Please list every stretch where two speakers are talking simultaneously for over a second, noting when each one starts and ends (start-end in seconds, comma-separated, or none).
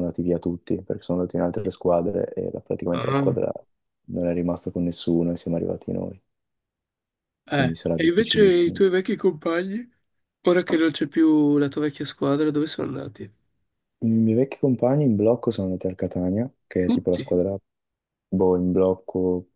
7.5-8.8